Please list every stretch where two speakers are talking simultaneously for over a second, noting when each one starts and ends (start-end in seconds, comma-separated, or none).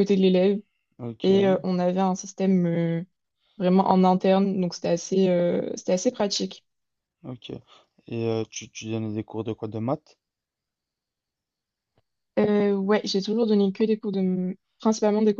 none